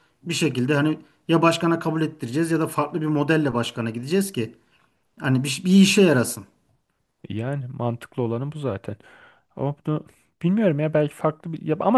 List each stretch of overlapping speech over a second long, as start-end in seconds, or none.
none